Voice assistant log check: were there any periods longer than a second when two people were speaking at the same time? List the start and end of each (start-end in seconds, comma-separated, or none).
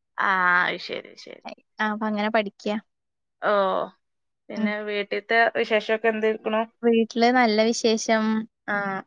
none